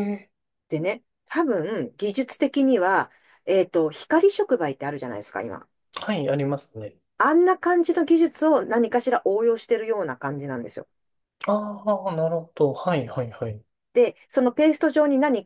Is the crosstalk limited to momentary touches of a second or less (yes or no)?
yes